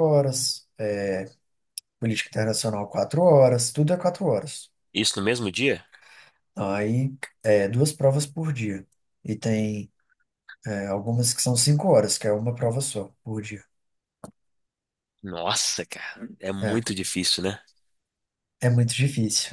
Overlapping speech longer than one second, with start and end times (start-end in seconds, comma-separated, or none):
none